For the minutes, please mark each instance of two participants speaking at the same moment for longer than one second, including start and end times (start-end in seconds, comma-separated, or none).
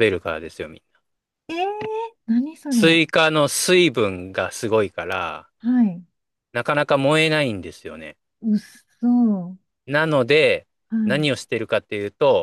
none